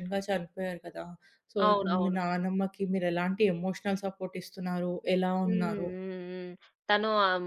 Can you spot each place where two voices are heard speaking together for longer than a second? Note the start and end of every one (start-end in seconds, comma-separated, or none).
none